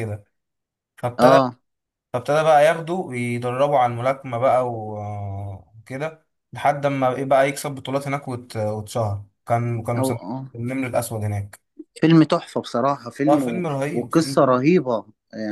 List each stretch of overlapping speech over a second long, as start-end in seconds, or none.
13.3-14.6